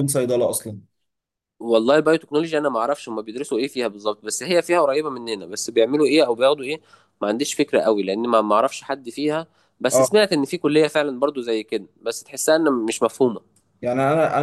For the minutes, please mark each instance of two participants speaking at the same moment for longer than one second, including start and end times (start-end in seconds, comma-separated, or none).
none